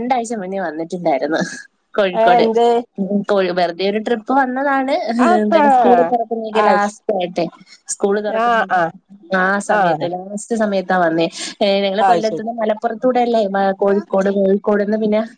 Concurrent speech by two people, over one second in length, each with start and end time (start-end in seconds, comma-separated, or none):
none